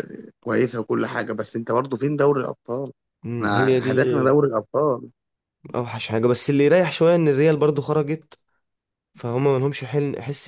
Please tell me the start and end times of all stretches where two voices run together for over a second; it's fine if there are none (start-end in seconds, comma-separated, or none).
none